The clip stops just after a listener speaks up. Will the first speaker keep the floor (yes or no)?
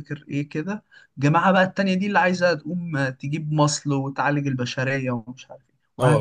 no